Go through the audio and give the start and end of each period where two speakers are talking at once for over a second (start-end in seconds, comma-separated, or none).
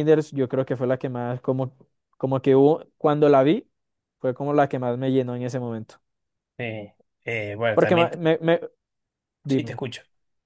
none